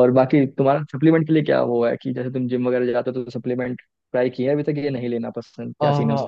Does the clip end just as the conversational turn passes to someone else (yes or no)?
yes